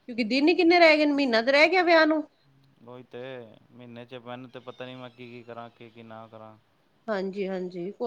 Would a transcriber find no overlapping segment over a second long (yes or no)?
yes